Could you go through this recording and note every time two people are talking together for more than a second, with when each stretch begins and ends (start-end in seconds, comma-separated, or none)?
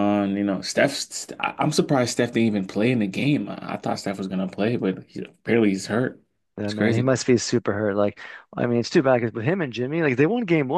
none